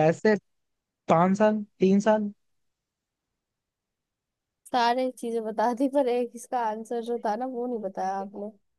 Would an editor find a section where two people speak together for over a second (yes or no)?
no